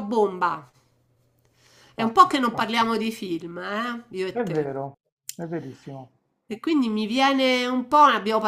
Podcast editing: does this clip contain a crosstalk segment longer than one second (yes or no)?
no